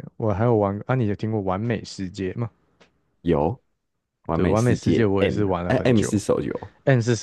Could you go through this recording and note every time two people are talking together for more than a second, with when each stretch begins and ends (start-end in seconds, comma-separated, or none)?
4.3-6.1